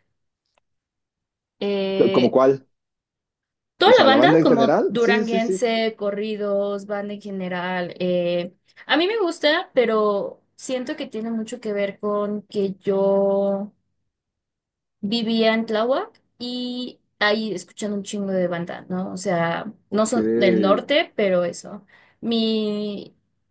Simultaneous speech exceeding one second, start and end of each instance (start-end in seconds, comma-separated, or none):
3.8-5.6